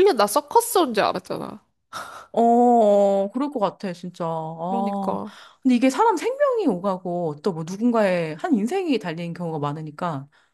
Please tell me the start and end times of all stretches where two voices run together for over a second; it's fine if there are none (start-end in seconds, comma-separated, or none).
none